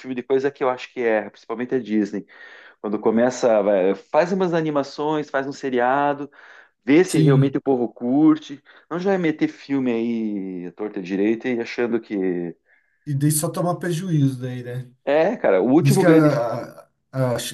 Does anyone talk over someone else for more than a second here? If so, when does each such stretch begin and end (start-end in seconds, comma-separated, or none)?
none